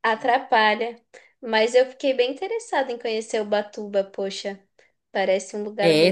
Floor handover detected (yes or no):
yes